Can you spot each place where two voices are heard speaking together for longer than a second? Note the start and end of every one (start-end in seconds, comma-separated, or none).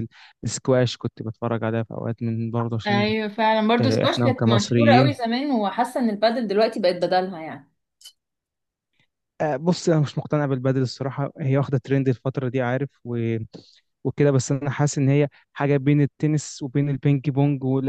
3.8-5.1